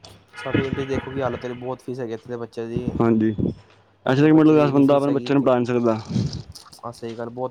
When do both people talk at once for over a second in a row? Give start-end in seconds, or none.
4.1-5.5